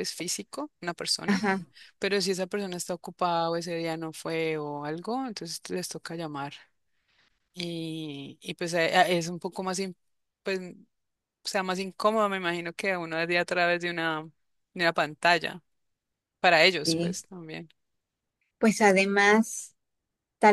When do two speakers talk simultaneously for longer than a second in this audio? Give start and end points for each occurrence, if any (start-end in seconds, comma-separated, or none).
none